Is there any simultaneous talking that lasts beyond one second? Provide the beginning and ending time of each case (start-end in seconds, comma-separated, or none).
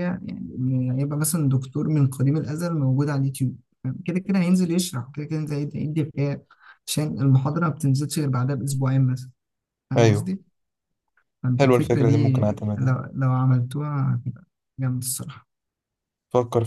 11.6-13.1